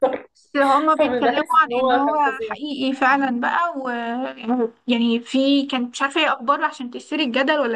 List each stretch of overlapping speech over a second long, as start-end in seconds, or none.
1.0-2.6